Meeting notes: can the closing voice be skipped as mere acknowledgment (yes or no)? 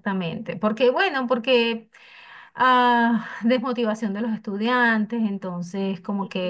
yes